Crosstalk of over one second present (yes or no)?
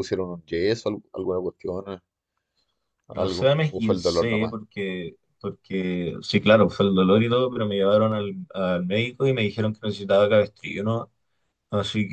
yes